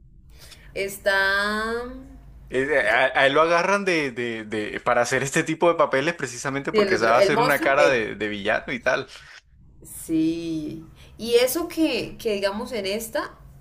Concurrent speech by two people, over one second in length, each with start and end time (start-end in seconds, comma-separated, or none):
6.7-8.1